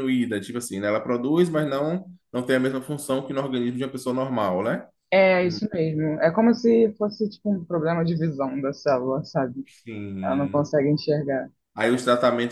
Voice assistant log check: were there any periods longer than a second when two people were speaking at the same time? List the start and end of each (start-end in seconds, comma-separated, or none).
none